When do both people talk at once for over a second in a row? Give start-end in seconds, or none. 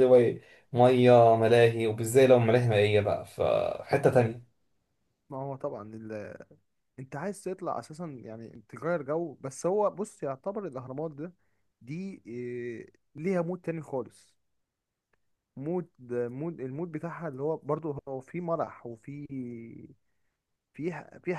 none